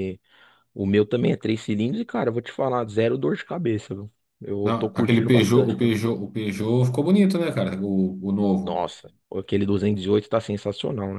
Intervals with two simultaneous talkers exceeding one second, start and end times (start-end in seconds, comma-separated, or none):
4.6-5.9